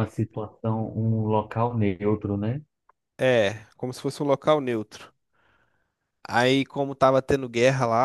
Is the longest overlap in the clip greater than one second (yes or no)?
no